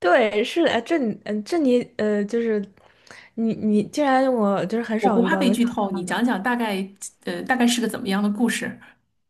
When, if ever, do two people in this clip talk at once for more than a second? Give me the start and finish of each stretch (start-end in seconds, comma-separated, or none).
5.0-6.3